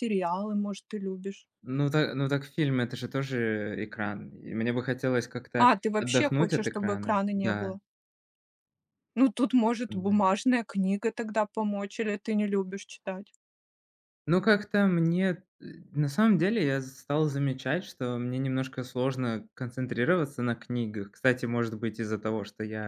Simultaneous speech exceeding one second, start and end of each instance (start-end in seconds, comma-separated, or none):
5.5-7.8